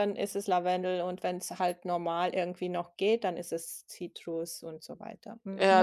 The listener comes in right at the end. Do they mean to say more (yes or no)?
yes